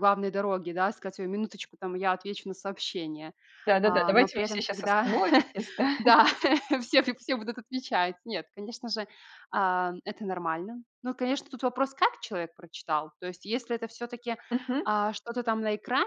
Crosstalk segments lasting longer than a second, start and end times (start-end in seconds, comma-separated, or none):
3.8-5.0